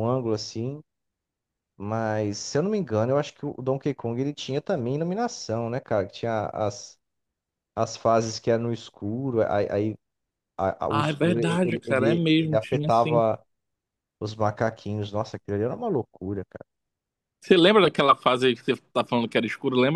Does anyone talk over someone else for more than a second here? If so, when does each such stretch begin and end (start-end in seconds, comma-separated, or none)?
10.9-13.2